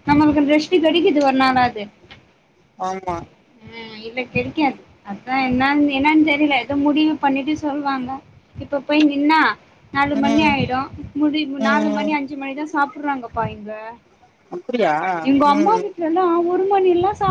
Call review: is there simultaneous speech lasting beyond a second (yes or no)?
no